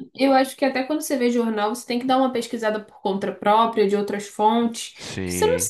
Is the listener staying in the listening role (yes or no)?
yes